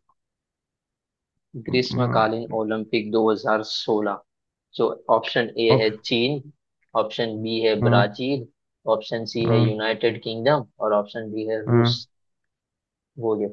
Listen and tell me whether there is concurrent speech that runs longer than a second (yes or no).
no